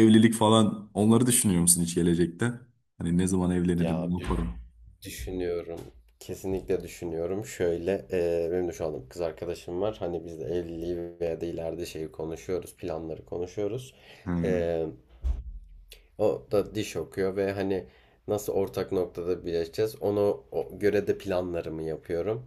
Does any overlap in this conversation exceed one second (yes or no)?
no